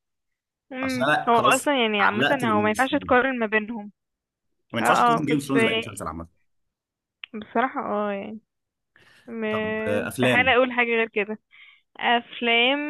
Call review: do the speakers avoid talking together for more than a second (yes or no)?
no